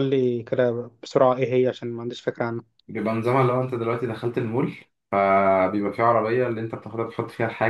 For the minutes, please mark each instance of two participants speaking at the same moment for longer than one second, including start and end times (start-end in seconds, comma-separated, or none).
none